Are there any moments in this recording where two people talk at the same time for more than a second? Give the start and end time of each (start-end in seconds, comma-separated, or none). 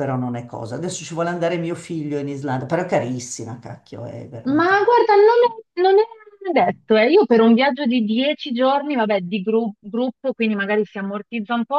none